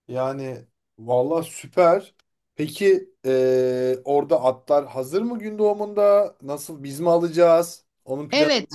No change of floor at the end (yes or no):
no